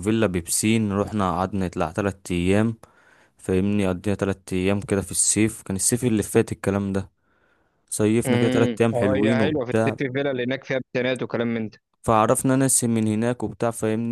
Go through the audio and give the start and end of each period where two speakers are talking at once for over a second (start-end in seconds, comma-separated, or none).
8.2-9.9